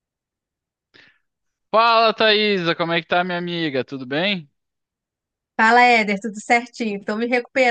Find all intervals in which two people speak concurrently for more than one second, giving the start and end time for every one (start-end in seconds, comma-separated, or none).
none